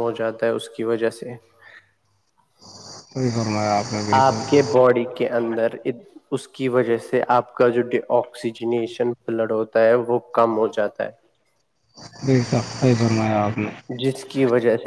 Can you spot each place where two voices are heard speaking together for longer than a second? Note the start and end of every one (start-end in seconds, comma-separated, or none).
none